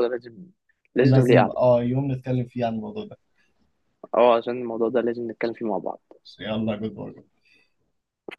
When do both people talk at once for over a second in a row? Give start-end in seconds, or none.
none